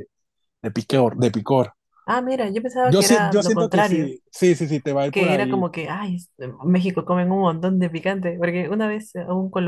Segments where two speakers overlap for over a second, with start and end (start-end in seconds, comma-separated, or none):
2.8-4.1